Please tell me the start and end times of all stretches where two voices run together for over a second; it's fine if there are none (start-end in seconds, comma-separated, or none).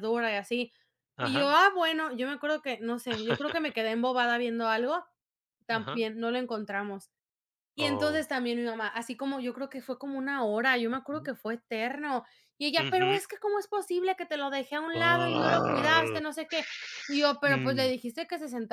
14.9-16.2